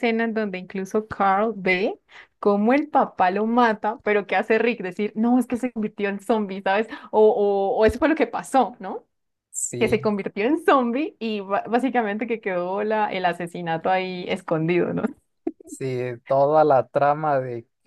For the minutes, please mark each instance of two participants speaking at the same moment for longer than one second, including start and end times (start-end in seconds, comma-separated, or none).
none